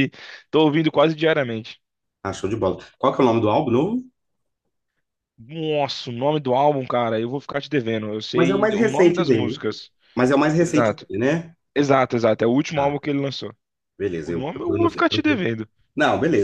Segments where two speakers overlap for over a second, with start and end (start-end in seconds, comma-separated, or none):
8.3-9.6, 14.2-15.4